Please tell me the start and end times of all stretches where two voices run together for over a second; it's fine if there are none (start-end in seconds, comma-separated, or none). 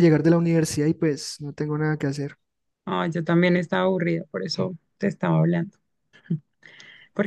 none